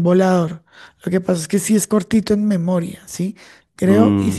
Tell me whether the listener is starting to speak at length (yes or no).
no